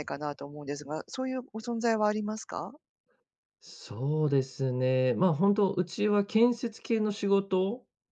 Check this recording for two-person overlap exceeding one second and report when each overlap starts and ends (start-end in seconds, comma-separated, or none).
none